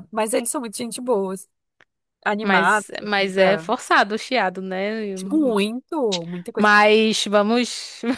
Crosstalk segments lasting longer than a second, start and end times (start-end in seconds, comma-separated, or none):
2.4-3.7